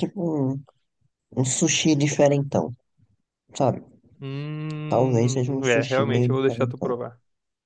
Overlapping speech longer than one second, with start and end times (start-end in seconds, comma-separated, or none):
4.9-6.9